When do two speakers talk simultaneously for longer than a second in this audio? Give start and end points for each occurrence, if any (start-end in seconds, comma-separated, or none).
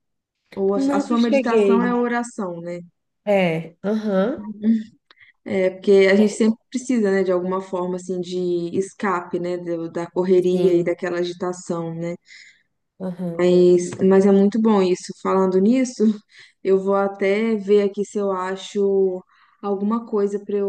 0.7-2.0